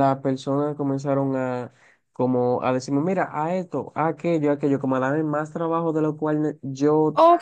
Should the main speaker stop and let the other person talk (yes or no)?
yes